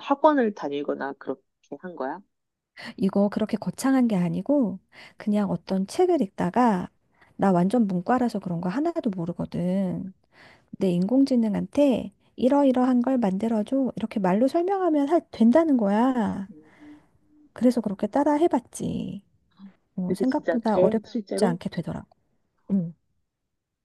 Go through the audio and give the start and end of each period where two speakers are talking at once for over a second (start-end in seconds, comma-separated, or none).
20.1-21.6